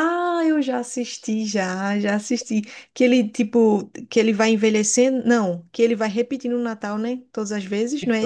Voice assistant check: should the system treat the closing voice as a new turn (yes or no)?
yes